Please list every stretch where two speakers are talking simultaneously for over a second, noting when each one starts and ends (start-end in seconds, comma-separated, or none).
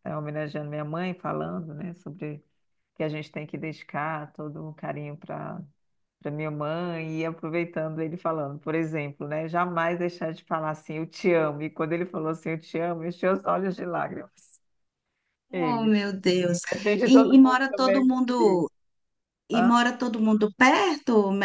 17.0-18.7